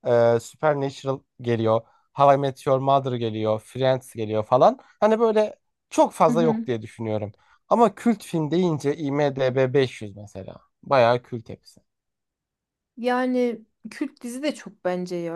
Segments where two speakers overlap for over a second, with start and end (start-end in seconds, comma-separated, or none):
none